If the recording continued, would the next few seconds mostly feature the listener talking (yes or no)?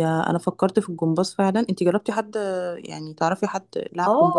yes